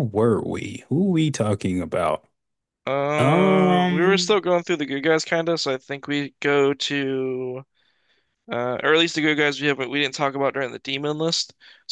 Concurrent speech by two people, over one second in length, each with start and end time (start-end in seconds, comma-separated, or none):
3.2-4.4